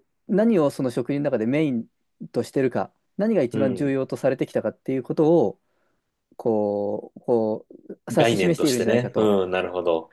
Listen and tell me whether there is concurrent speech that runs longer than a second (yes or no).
yes